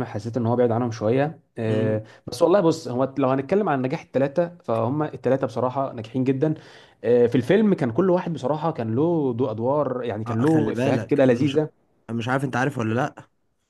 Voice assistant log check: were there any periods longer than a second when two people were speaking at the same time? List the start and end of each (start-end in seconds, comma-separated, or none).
10.3-11.6